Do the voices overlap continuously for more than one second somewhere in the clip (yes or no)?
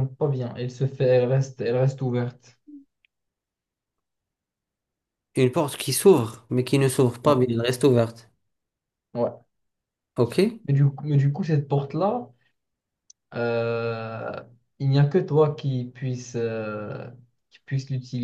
no